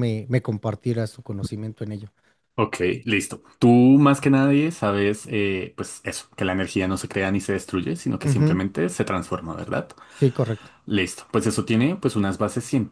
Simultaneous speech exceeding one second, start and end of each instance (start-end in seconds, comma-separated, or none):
none